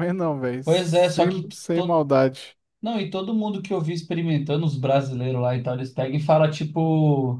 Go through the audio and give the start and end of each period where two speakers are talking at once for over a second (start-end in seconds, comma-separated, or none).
0.6-2.0